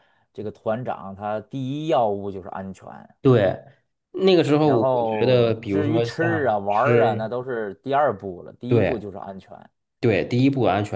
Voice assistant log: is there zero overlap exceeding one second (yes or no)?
no